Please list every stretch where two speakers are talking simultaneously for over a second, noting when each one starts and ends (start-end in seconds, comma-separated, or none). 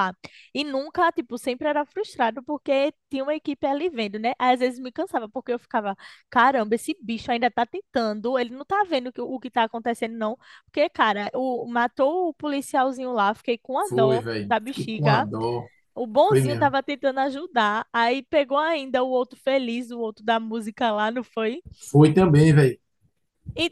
13.8-15.3